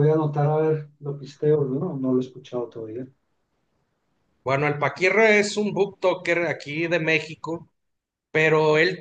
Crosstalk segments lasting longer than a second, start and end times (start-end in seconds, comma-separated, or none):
none